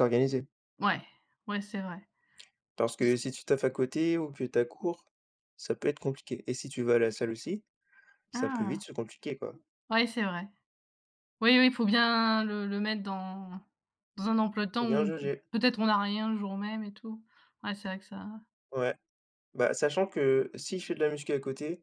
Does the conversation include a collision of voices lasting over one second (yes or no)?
no